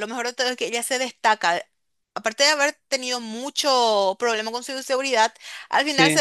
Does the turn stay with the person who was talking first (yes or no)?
yes